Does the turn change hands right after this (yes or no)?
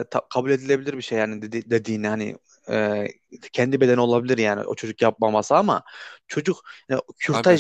no